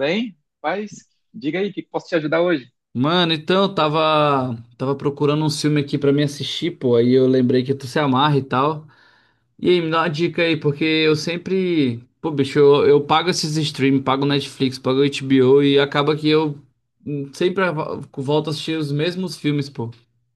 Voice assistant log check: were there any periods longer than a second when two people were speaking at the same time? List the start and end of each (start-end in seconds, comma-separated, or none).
none